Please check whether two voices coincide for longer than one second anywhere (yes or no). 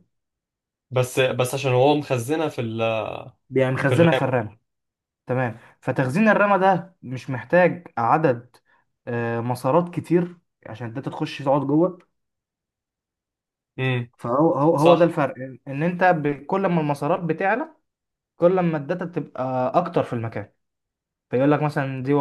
no